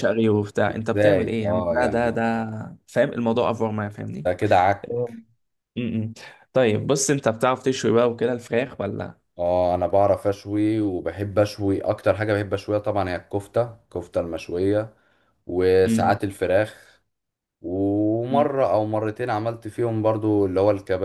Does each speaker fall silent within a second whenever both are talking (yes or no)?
no